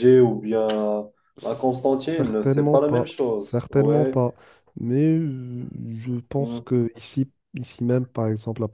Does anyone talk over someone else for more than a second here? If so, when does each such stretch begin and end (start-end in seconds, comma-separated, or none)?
2.2-4.2